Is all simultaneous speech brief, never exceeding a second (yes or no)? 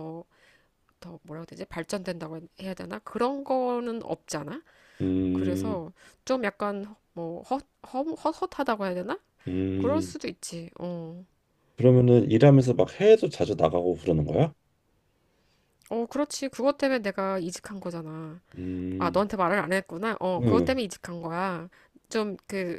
yes